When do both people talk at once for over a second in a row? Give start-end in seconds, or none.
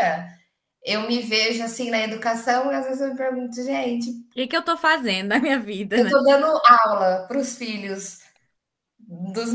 none